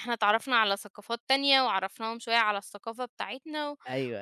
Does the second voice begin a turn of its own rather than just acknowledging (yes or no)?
yes